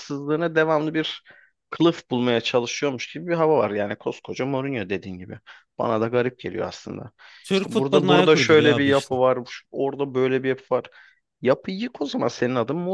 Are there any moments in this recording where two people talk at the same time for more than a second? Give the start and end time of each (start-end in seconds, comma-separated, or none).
7.5-9.2